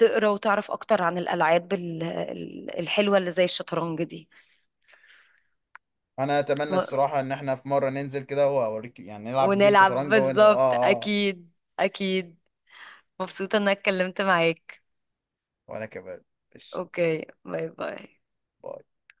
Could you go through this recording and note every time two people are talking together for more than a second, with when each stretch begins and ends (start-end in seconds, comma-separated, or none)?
9.4-11.2